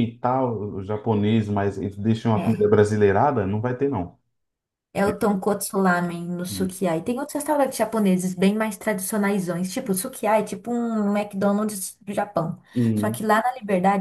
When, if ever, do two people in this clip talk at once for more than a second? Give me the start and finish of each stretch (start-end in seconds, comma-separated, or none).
none